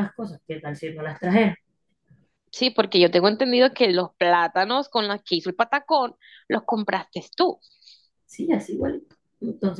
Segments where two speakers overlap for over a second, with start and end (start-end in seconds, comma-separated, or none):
none